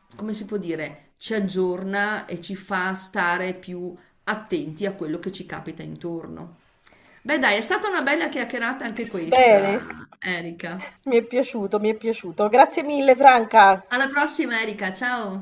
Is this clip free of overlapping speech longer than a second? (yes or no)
yes